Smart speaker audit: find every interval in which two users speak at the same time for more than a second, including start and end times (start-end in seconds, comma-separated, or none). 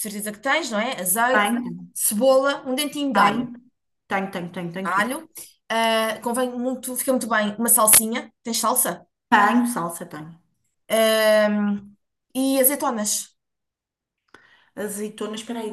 none